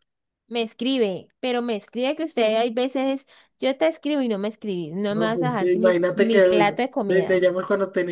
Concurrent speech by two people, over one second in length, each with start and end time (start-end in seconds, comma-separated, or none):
5.1-7.5